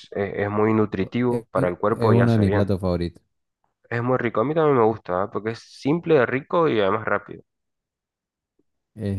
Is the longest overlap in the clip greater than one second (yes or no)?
yes